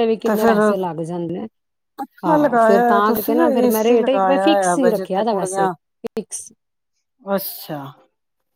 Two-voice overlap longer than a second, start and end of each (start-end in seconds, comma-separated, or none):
2.3-5.7